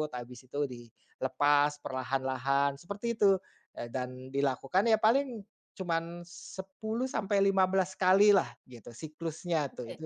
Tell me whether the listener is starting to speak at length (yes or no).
yes